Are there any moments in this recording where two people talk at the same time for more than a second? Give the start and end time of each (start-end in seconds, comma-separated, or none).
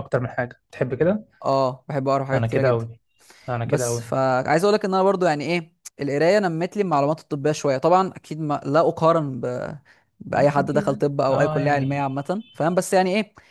10.4-12.0